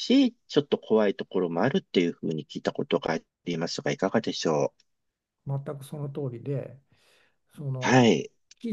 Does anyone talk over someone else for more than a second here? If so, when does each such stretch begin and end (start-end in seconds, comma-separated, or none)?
none